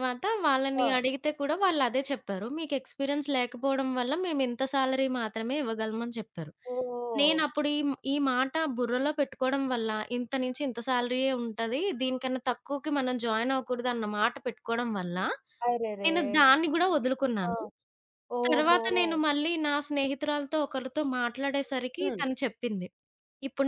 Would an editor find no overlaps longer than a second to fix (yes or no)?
yes